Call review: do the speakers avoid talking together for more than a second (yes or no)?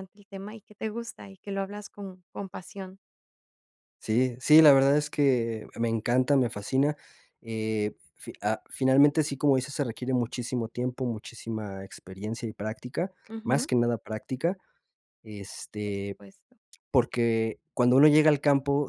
yes